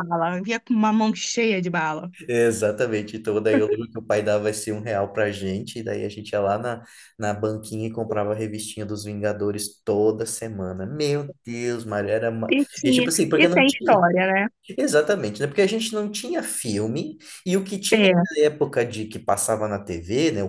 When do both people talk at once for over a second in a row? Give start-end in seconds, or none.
12.5-14.1